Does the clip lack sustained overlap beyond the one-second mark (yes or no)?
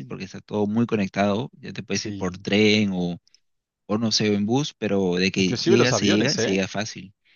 no